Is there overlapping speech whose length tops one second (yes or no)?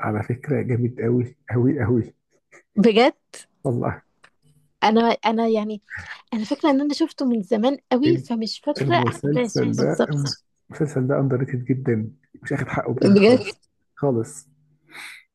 yes